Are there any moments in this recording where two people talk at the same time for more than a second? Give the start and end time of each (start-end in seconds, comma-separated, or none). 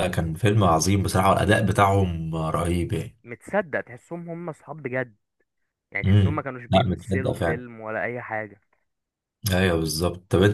6.0-7.6